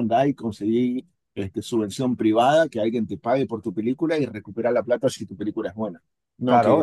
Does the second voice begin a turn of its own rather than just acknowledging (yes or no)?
yes